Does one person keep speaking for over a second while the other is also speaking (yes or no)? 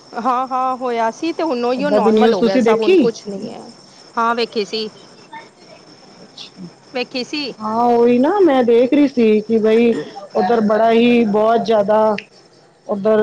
yes